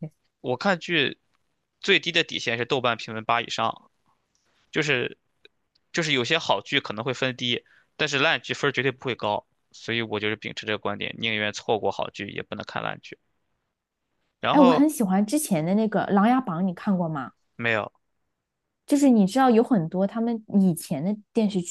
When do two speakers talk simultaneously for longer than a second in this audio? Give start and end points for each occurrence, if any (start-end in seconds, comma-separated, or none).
none